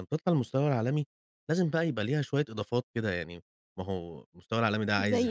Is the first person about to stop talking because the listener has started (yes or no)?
no